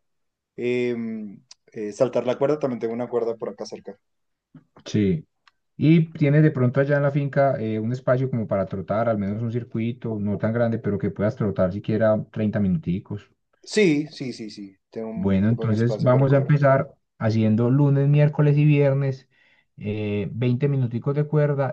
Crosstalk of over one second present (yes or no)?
yes